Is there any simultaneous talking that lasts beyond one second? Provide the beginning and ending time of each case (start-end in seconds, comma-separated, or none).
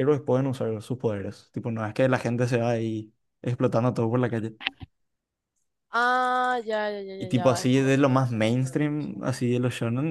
7.2-9.2